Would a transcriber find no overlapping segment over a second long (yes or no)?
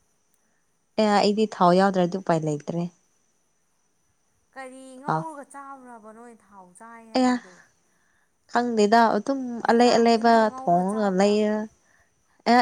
no